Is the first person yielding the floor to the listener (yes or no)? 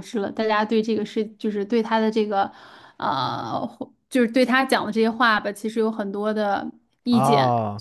yes